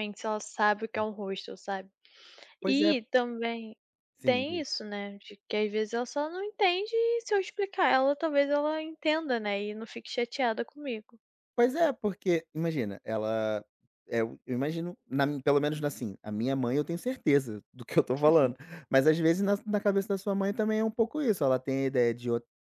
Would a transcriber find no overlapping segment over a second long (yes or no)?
yes